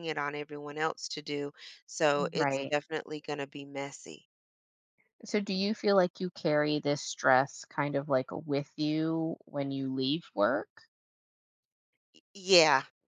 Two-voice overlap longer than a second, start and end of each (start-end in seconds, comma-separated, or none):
none